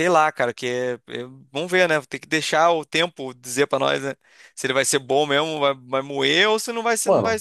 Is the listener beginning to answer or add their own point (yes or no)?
yes